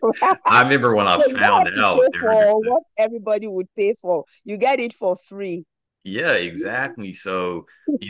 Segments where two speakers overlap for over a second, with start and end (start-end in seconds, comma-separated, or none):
1.2-2.4